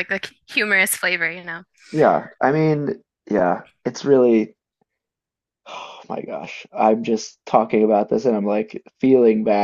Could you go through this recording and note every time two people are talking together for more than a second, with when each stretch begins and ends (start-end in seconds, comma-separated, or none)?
none